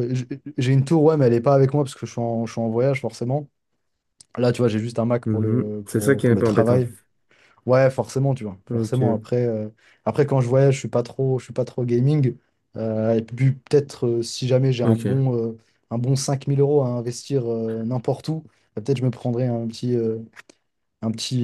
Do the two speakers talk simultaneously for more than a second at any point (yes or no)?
yes